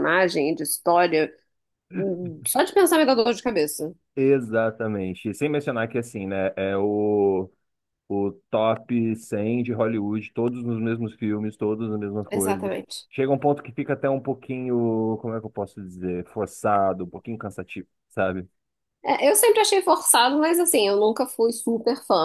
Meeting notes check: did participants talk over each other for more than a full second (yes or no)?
no